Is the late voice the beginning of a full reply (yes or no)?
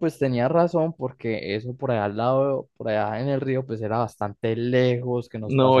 yes